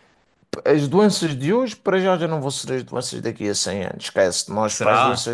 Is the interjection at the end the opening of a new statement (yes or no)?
no